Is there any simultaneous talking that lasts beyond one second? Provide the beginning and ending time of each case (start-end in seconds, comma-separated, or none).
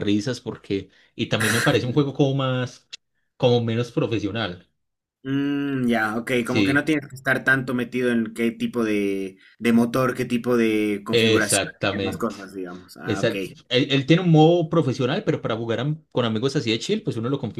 11.1-12.3